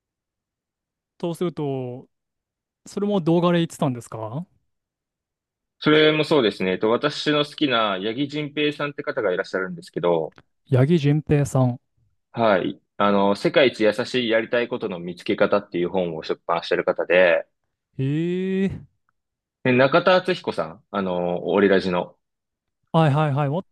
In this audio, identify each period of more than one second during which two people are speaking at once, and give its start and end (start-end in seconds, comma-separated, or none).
none